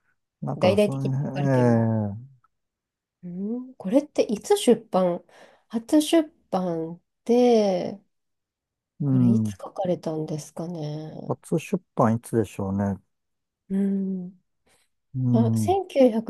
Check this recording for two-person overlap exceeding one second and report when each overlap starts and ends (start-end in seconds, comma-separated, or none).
0.6-1.9